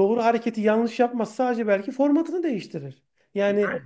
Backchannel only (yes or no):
yes